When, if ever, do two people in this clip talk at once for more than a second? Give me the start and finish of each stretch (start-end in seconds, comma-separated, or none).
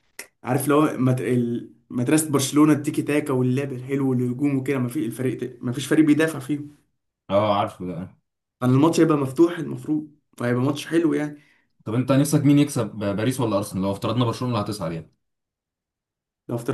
none